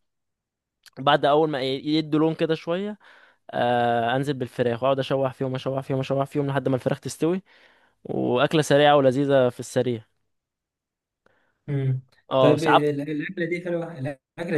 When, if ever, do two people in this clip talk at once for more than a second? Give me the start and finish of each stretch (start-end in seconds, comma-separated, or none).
none